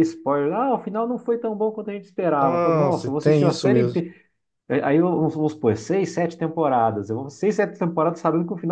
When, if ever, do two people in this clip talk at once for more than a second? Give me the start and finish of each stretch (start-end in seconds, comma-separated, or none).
2.4-4.0